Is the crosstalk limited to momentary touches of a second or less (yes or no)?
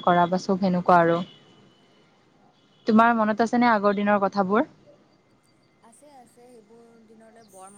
yes